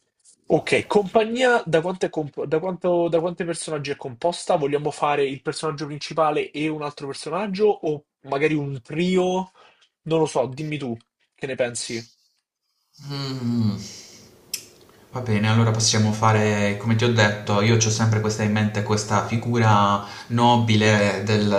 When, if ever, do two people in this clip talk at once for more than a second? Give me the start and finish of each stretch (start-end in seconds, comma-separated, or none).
none